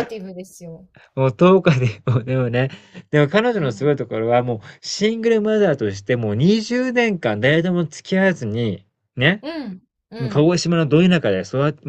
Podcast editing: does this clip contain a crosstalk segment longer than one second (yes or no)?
no